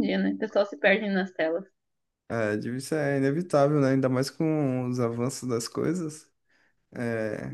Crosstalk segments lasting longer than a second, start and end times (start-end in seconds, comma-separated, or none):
none